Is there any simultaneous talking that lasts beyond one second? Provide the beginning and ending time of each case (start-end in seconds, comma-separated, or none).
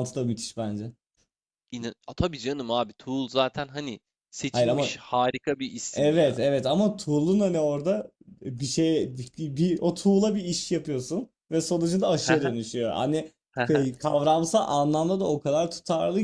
none